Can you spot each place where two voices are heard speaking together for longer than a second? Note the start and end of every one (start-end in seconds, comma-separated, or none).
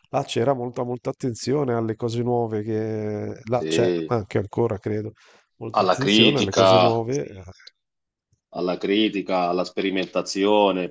5.7-7.0